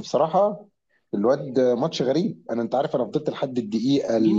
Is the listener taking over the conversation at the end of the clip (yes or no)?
yes